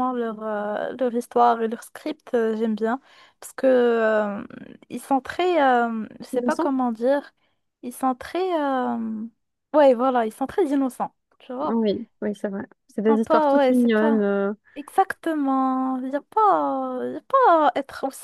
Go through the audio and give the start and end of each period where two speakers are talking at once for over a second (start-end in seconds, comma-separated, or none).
12.9-14.3